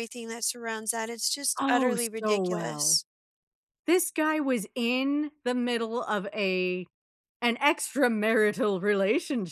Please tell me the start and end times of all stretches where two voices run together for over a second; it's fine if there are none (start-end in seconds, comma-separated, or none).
1.6-3.0